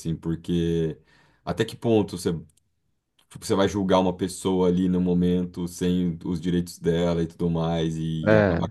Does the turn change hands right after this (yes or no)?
no